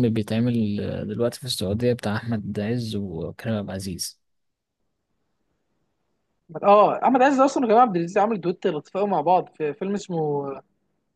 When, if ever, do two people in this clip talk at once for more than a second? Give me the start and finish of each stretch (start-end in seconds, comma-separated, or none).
none